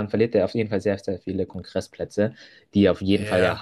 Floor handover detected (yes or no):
no